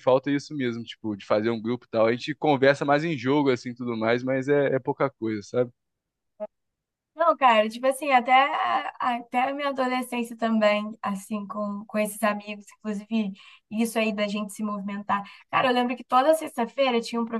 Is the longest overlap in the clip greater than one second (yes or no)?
no